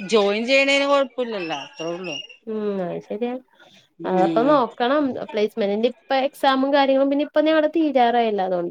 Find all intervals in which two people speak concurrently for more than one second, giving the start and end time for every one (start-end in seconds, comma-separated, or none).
none